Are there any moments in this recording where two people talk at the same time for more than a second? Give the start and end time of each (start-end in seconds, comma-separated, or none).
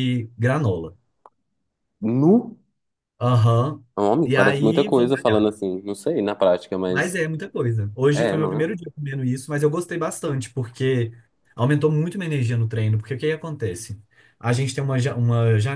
4.2-5.5